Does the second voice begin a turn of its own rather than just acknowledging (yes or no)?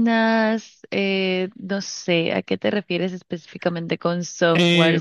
yes